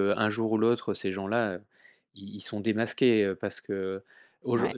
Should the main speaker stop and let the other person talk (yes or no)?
no